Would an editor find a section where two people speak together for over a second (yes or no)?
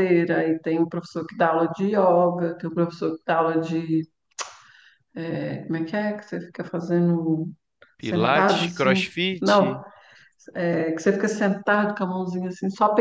yes